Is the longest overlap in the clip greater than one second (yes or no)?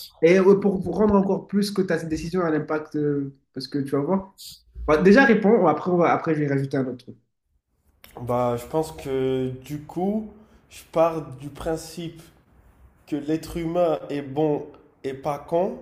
no